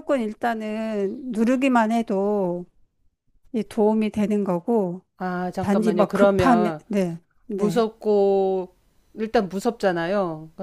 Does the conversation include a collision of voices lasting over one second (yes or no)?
yes